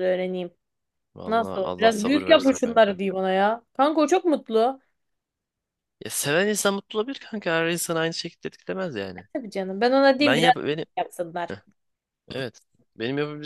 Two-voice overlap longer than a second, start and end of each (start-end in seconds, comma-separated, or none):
1.3-3.0